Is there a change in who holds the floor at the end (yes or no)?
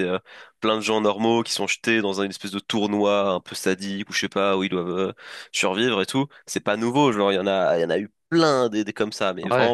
no